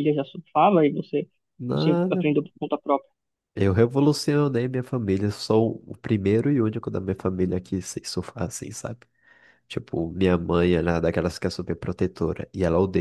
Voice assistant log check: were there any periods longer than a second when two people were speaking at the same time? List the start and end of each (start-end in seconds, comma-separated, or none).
none